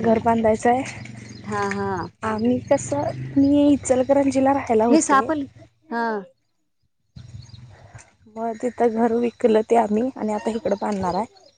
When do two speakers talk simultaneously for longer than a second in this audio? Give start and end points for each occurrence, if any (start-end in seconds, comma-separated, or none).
none